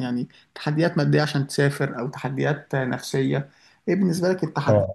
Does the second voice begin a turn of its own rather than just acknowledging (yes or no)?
no